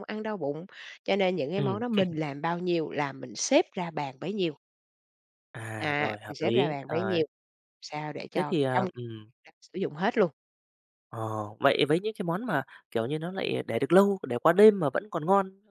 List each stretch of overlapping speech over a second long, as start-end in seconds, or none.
5.8-7.2